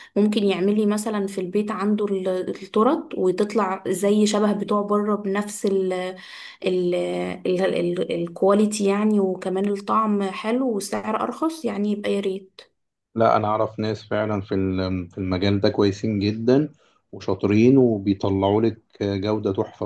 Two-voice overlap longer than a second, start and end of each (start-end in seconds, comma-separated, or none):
none